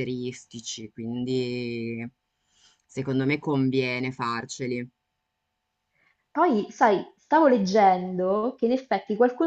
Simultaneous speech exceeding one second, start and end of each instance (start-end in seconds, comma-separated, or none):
none